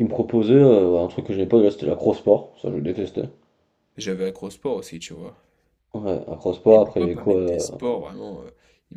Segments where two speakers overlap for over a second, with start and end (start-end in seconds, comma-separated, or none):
6.7-7.9